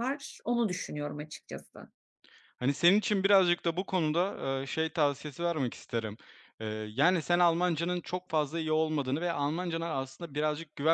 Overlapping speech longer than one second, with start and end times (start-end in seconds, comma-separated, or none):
none